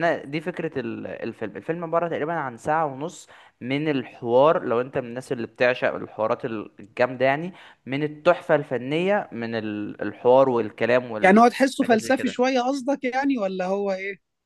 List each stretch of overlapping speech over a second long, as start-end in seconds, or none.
11.2-12.5